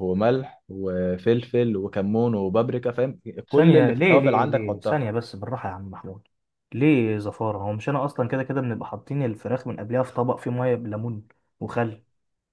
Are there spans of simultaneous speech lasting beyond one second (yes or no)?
yes